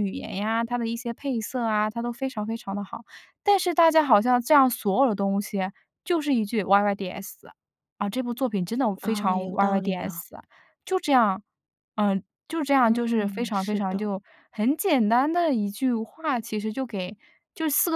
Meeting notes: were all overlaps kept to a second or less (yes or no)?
no